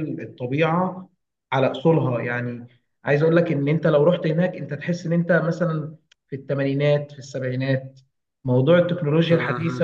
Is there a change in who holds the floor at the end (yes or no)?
no